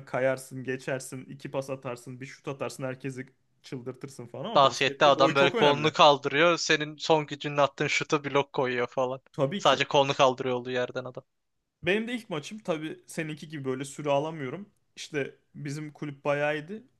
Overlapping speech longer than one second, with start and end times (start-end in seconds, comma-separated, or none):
4.5-6.0